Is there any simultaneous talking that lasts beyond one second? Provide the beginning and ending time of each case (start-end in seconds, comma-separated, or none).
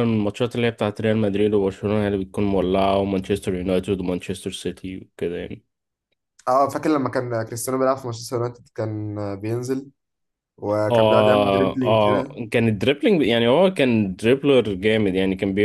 10.9-12.4